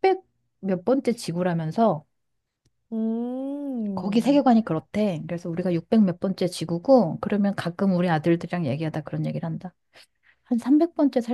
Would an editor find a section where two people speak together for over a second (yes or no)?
no